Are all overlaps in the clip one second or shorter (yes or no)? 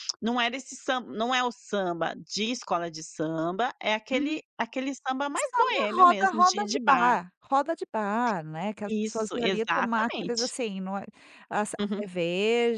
no